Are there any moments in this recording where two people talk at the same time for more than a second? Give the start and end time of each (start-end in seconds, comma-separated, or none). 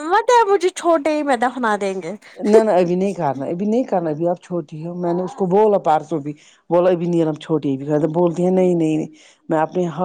none